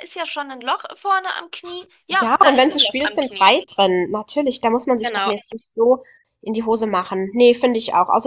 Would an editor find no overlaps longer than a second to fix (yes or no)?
no